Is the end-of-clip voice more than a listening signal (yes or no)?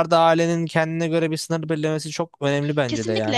yes